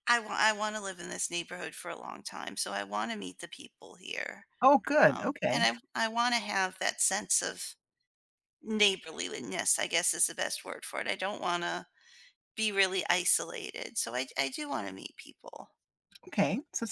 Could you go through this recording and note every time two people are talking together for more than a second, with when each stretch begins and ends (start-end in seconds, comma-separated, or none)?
none